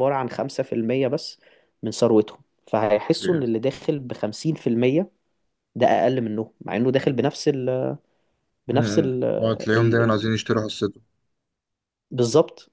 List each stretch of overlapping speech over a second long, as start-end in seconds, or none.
8.7-10.2